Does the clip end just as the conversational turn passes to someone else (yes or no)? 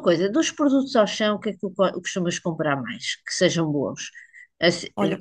no